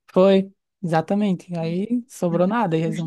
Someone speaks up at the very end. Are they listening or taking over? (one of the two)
listening